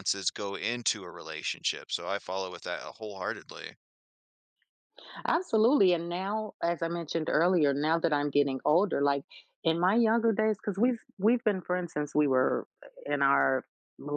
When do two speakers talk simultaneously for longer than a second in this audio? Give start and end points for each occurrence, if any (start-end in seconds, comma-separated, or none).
none